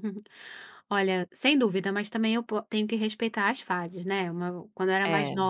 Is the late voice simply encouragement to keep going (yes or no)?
yes